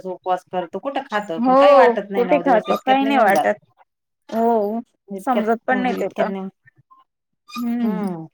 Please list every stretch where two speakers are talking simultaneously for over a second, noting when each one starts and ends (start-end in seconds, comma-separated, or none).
1.5-3.5